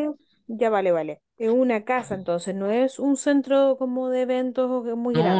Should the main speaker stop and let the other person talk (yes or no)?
yes